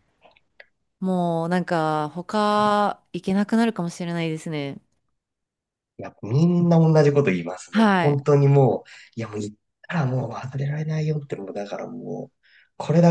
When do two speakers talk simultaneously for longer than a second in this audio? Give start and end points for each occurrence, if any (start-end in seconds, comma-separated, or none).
none